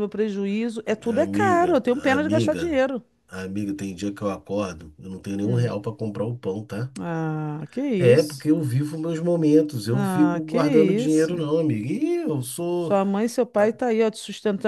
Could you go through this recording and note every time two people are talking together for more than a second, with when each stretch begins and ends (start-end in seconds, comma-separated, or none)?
1.2-2.8, 9.9-11.4